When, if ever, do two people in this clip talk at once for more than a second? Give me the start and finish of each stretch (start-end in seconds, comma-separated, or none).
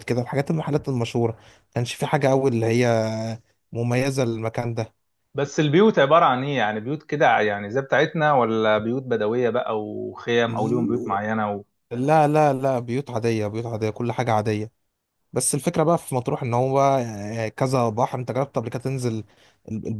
none